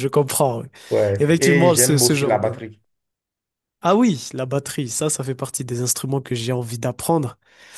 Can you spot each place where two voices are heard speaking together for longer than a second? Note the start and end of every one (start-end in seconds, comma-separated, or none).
1.2-2.6